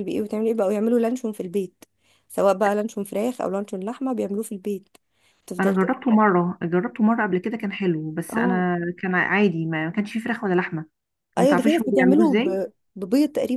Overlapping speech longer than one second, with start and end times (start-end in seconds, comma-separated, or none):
11.4-12.6